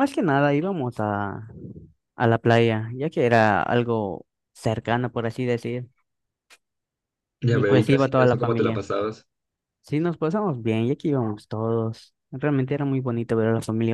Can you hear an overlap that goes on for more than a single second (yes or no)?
yes